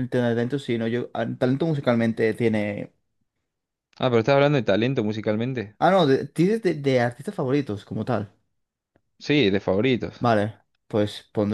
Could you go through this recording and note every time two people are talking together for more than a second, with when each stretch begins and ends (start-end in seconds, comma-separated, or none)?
none